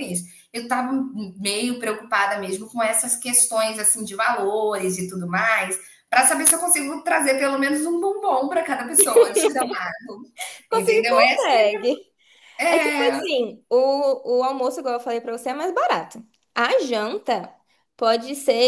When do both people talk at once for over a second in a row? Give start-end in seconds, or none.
none